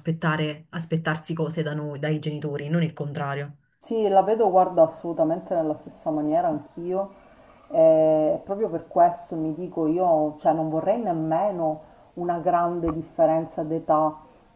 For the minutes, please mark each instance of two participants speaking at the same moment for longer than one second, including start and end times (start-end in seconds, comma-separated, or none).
none